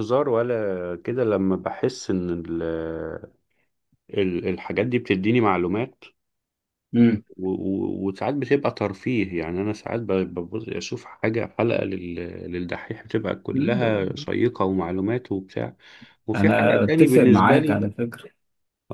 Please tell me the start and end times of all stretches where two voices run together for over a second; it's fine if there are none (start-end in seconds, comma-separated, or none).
16.4-17.9